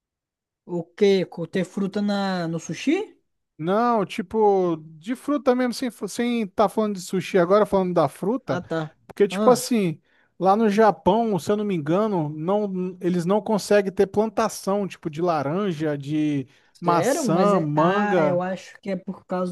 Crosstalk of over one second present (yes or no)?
yes